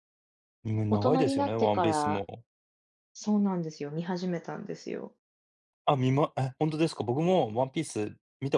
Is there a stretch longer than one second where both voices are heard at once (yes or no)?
yes